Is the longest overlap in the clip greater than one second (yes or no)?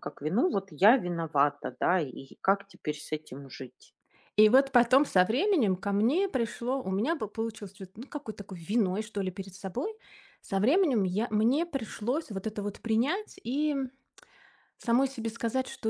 no